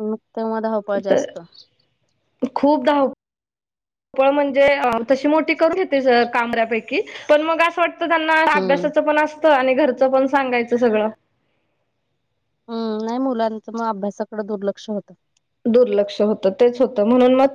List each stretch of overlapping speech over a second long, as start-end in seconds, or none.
none